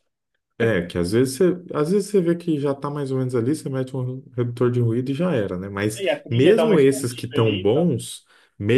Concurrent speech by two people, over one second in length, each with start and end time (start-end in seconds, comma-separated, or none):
5.9-7.9